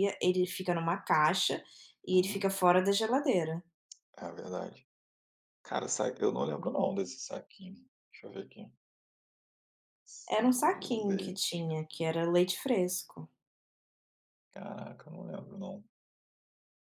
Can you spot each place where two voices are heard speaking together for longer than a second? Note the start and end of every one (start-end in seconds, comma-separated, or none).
10.3-11.7